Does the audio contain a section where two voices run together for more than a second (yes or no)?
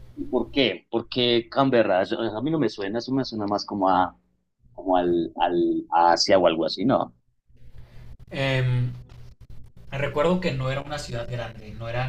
no